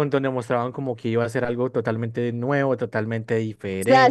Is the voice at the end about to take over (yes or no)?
yes